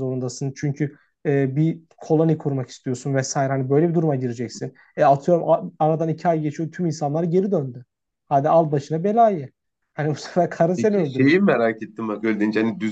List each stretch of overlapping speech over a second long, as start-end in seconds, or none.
none